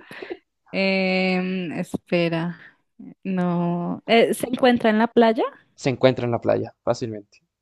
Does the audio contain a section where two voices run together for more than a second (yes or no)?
no